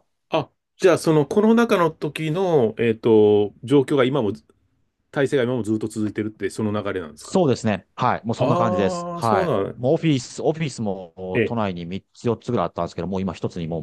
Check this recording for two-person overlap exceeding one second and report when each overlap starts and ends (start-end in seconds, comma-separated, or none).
8.4-9.8